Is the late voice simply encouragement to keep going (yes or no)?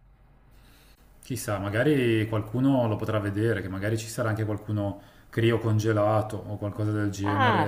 no